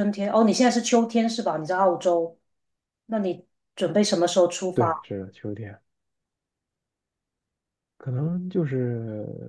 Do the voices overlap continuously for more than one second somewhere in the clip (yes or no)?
no